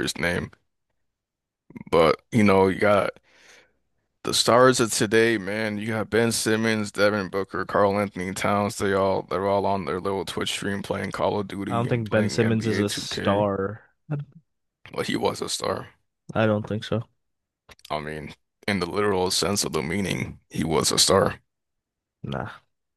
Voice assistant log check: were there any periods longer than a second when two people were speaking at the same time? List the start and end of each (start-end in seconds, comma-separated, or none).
11.7-13.5